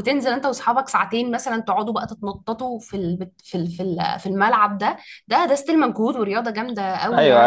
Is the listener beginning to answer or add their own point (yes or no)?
yes